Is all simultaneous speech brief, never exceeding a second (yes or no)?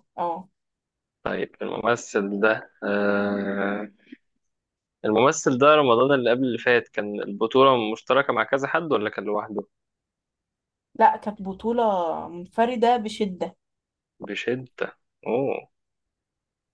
yes